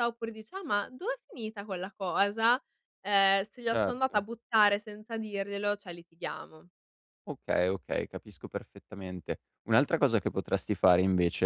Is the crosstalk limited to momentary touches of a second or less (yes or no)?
yes